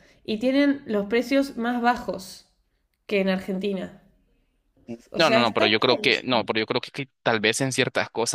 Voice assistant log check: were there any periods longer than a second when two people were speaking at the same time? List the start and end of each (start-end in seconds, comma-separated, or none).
5.2-6.5